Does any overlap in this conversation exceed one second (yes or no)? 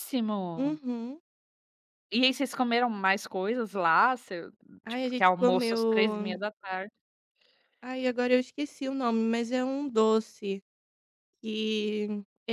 yes